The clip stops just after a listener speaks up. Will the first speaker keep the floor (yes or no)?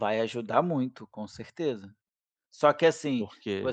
yes